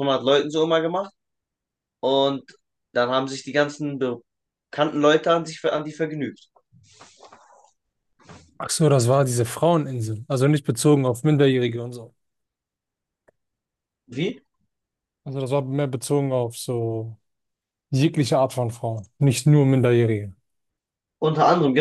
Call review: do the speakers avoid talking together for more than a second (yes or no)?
yes